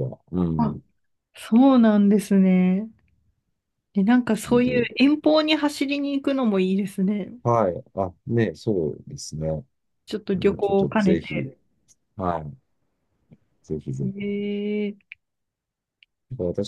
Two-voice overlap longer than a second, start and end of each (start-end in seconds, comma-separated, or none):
10.1-11.5